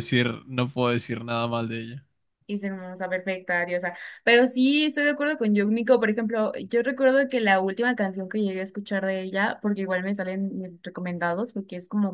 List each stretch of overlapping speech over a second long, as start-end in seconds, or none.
none